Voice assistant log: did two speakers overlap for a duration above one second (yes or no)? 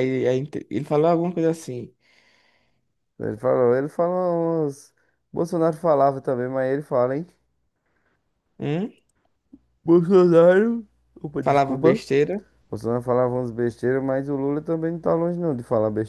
no